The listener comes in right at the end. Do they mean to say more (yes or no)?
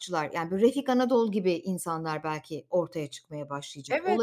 yes